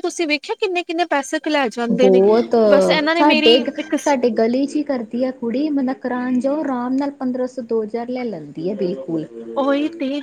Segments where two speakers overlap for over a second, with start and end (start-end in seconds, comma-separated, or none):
none